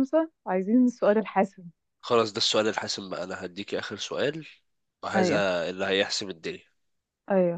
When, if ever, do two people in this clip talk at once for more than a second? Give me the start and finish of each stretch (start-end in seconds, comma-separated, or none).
none